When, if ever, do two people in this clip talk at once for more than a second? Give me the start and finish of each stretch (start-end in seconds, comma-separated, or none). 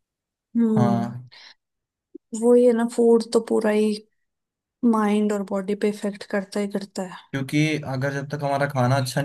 none